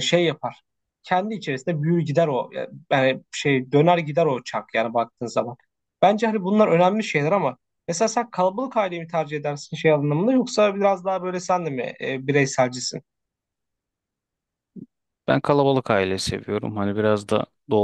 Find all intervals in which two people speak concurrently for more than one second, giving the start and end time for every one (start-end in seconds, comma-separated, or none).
none